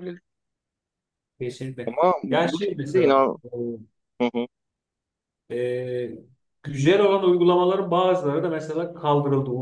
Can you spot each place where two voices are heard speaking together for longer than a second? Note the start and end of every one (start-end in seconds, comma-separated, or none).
1.9-3.4